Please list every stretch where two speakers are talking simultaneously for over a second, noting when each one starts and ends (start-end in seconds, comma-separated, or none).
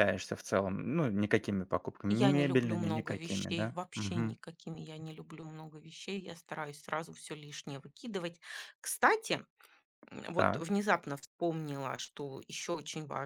2.1-4.4